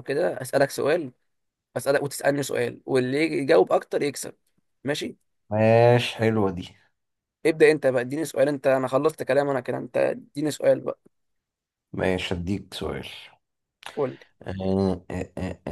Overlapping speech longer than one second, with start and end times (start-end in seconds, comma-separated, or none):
none